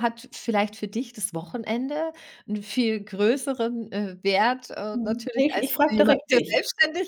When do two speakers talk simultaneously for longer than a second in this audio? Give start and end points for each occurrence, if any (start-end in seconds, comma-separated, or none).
4.9-6.6